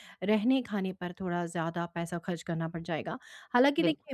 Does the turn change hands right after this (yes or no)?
no